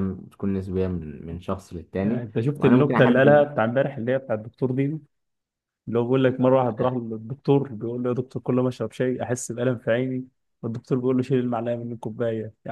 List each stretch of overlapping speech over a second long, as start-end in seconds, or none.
2.0-3.4